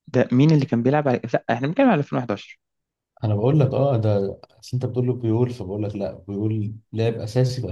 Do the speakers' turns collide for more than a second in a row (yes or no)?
no